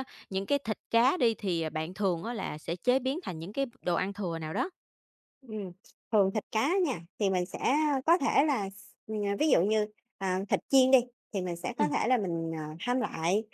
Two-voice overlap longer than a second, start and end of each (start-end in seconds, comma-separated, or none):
none